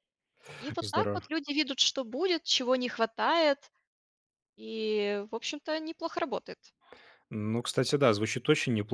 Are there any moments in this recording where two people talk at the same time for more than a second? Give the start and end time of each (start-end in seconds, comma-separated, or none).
none